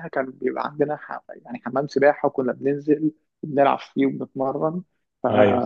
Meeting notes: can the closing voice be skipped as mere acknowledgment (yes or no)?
yes